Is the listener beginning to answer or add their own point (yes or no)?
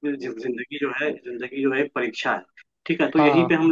no